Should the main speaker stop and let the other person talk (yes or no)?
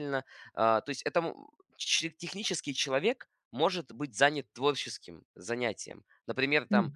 no